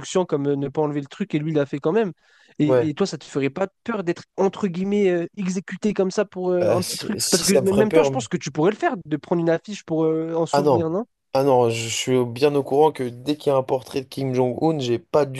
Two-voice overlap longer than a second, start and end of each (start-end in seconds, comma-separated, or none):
6.6-8.3